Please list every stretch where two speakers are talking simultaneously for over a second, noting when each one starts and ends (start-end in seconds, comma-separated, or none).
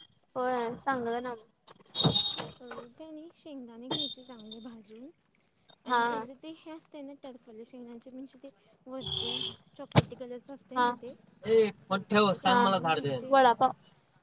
11.9-13.3